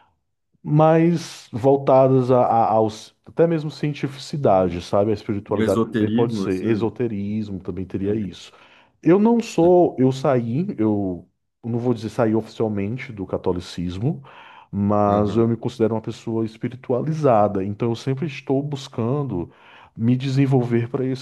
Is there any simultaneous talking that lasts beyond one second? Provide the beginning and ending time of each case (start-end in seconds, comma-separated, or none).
5.5-6.7